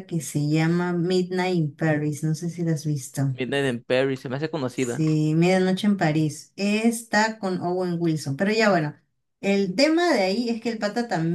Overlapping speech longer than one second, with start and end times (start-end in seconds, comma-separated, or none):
none